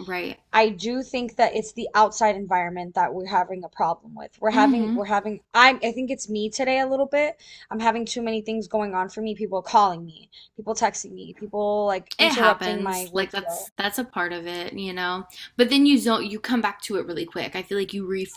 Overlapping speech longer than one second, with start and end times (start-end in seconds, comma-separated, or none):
12.2-13.7